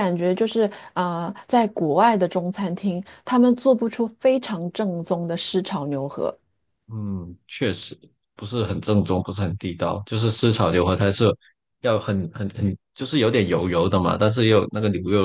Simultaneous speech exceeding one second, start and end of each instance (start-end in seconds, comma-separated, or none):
none